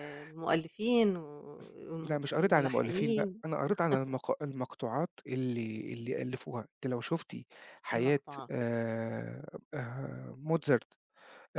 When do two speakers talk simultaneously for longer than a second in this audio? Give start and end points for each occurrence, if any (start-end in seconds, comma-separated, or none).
2.0-3.4